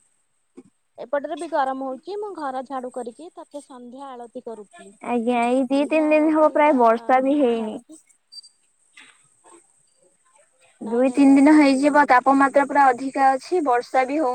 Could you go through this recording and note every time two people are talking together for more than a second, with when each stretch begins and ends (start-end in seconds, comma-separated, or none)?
10.9-12.8